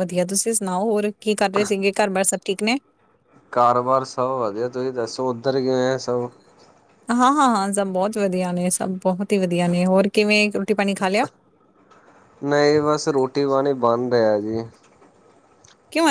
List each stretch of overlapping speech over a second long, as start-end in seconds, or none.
none